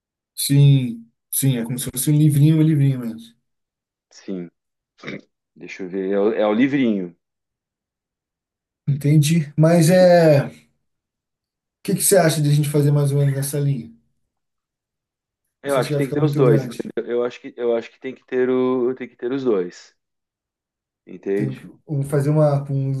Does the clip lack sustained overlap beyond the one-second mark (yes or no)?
no